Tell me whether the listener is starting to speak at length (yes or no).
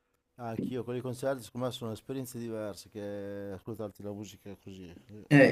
yes